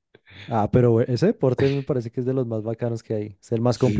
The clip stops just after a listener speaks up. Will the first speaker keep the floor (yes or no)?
no